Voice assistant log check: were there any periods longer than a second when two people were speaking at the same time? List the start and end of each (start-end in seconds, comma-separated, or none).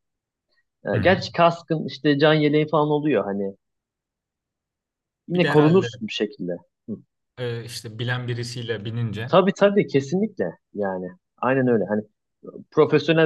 none